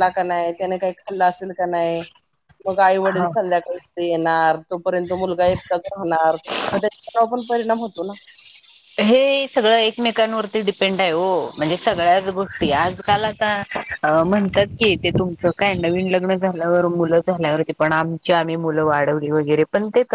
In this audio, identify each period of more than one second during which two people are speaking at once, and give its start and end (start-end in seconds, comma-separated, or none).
none